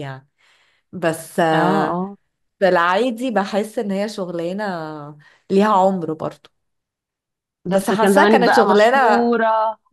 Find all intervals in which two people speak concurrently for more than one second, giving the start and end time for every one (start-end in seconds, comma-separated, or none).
7.7-9.3